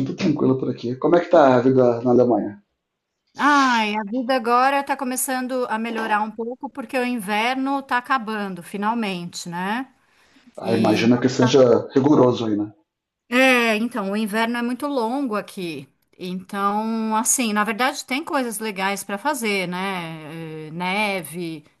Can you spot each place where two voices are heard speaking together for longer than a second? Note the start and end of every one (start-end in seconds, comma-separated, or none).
none